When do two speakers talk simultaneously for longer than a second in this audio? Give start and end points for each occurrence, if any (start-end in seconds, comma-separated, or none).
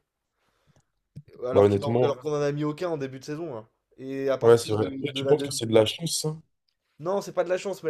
4.4-5.6